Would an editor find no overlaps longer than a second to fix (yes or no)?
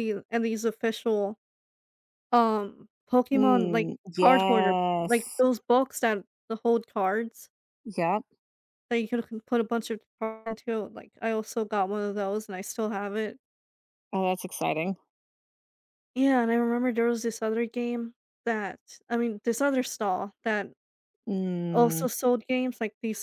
no